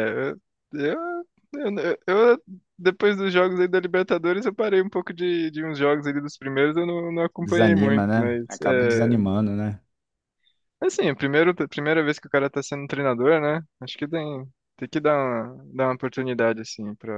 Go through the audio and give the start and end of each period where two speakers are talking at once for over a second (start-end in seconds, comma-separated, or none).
7.4-9.2